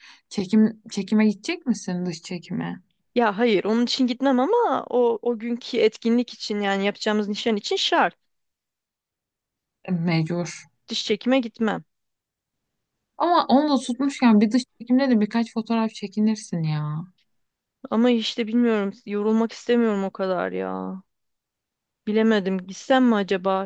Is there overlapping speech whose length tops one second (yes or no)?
no